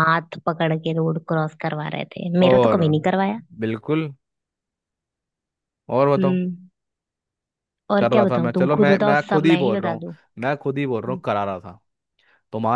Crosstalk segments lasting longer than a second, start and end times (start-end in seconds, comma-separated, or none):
8.0-10.0